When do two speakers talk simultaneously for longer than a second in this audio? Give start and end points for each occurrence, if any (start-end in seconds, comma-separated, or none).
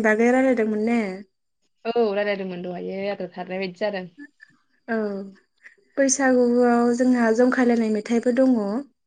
none